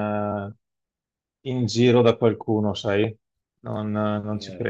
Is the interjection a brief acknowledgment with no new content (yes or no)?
no